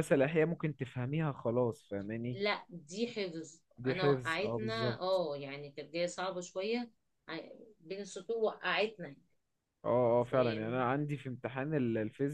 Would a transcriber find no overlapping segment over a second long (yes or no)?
no